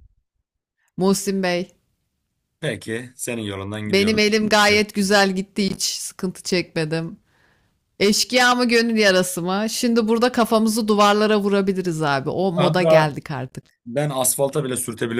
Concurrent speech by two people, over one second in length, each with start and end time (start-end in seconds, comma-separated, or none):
none